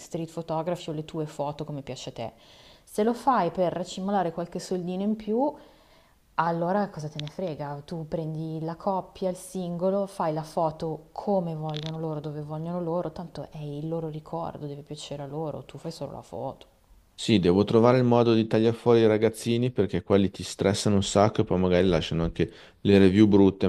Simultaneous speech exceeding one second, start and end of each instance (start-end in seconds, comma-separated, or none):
none